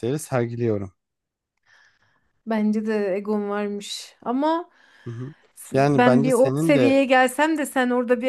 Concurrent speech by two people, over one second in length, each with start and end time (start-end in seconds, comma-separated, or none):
5.7-7.0